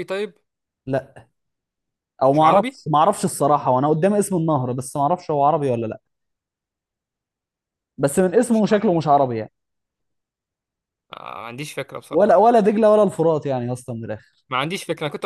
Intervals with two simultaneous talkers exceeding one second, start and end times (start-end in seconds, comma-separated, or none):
none